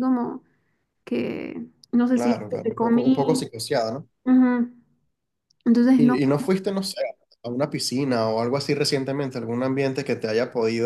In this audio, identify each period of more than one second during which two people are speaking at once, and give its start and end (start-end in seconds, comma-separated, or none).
2.1-3.4